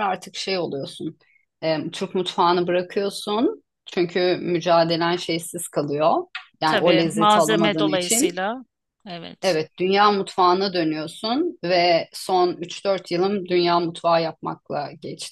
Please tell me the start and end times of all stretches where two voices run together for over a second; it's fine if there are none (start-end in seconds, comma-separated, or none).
6.6-8.4